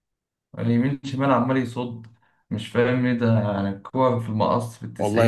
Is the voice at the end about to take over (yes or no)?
yes